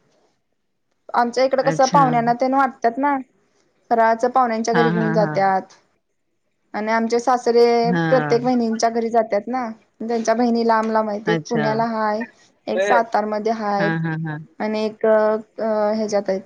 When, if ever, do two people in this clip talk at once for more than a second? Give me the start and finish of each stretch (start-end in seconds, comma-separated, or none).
none